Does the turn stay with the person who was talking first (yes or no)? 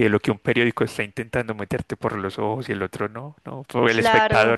no